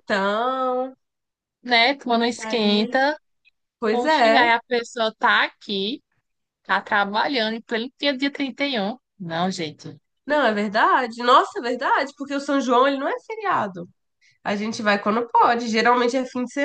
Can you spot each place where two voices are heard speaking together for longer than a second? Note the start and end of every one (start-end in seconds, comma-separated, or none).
none